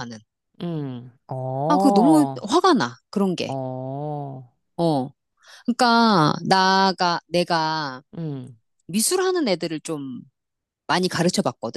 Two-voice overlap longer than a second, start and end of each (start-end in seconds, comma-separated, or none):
none